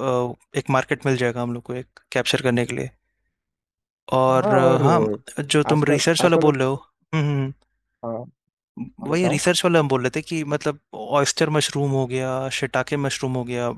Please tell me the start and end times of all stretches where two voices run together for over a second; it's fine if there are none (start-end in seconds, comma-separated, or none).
4.4-6.5